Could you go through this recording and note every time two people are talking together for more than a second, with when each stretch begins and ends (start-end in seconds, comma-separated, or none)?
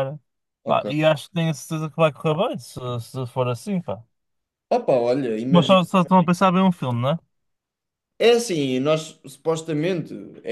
none